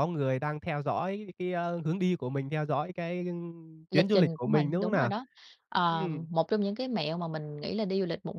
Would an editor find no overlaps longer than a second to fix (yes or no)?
no